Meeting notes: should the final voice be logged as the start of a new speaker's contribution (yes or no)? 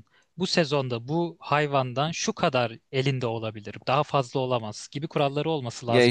yes